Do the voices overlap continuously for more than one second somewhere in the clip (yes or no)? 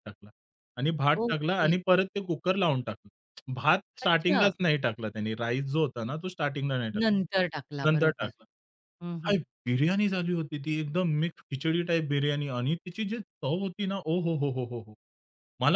yes